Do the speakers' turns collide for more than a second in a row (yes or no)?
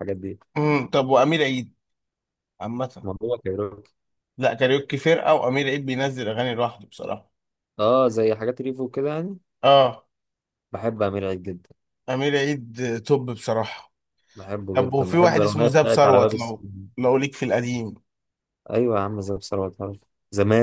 yes